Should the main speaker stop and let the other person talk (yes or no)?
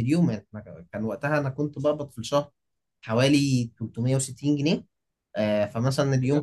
no